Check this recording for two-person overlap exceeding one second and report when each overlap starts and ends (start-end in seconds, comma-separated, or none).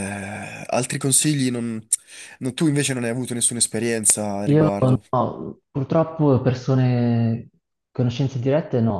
none